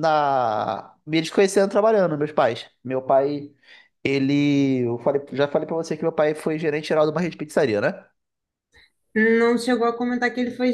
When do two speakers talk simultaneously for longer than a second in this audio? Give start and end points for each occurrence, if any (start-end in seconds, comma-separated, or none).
none